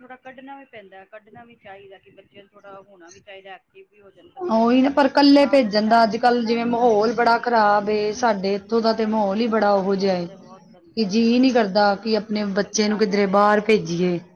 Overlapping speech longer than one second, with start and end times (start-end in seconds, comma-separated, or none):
6.2-8.1, 8.8-11.2